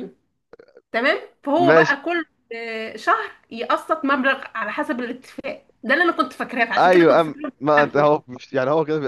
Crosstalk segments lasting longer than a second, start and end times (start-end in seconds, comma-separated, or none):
6.8-8.1